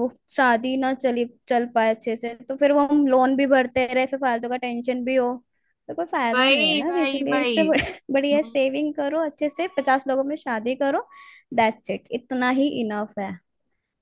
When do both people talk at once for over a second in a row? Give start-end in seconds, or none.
6.3-7.7